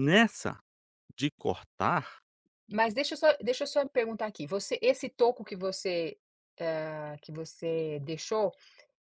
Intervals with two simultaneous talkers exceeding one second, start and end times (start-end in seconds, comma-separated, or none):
none